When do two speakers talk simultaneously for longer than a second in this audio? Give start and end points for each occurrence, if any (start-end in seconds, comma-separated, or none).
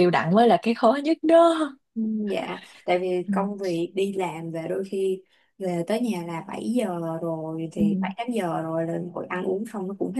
none